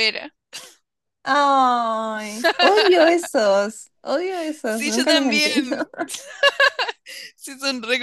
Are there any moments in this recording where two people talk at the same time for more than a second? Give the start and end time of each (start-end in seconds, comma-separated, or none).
4.6-5.9